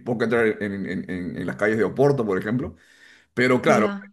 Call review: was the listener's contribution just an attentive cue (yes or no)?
yes